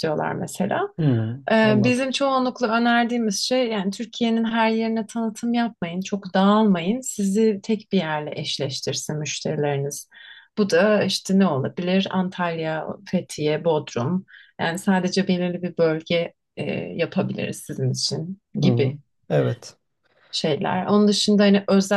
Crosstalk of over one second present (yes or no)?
no